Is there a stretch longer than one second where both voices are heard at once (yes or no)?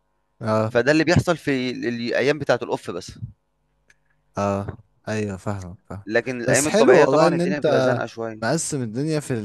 yes